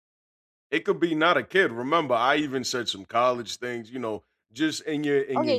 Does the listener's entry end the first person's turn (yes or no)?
yes